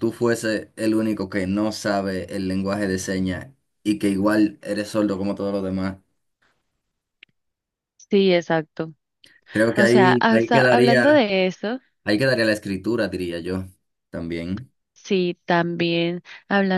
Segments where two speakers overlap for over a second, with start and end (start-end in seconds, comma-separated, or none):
9.8-11.3